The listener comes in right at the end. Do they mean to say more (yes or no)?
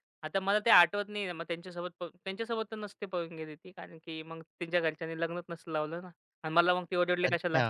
yes